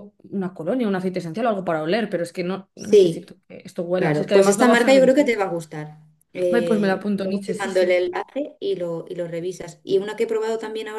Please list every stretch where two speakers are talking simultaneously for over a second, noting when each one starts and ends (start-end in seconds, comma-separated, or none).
4.0-5.4, 6.5-8.0